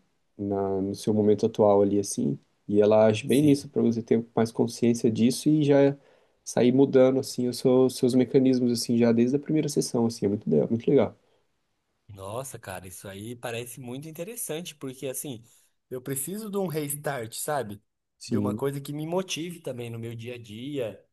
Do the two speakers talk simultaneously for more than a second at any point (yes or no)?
no